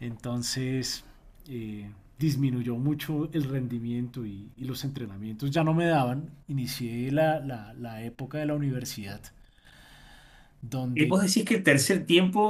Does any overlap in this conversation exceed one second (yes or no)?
no